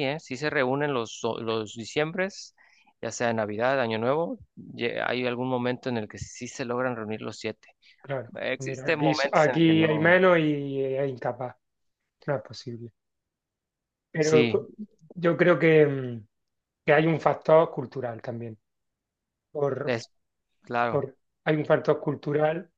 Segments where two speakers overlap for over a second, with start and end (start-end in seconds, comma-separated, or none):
8.4-10.2